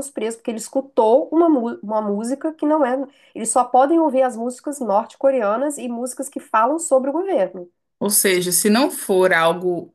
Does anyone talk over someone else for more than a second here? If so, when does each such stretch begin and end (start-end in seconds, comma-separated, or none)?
none